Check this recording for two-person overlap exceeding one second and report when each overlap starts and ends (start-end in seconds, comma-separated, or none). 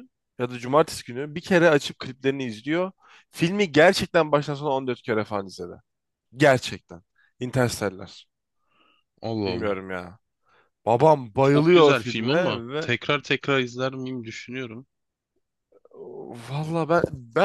11.4-12.9